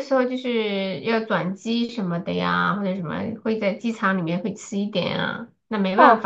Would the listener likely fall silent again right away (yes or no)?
no